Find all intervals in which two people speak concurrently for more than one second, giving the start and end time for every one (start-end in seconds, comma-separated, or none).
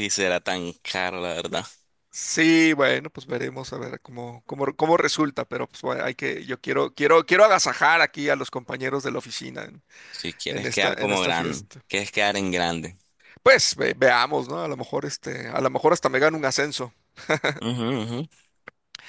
10.5-11.8